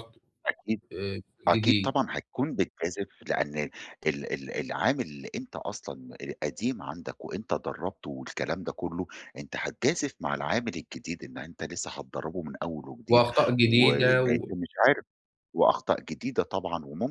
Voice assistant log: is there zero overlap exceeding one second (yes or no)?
no